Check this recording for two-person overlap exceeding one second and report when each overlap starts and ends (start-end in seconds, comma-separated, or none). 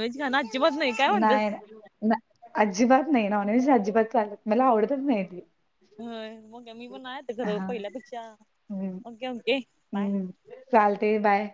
none